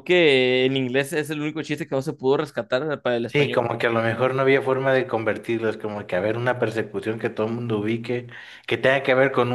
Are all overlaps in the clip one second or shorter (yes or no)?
yes